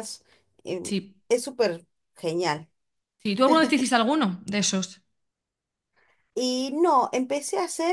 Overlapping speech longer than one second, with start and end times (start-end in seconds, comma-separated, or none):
none